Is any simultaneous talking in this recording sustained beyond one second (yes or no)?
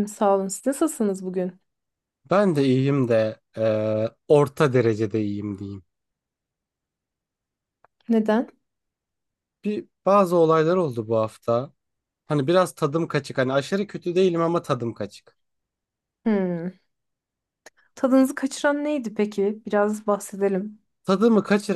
no